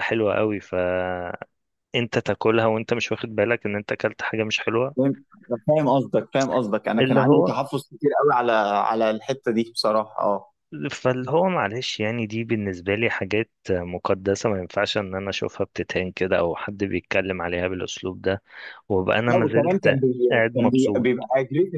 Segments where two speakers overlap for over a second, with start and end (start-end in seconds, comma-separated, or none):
19.3-21.1